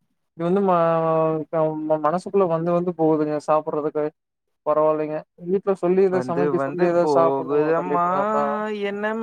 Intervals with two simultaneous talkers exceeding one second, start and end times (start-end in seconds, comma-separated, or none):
6.2-8.1